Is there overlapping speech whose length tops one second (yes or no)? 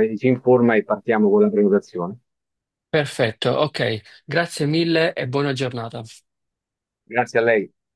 no